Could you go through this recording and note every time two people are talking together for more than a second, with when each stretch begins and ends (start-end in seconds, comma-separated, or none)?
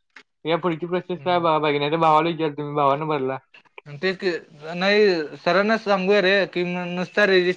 none